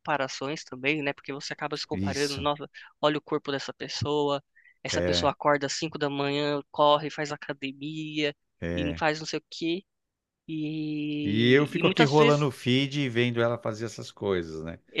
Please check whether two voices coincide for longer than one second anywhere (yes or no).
yes